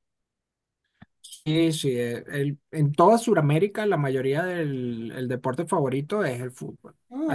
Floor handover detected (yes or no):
no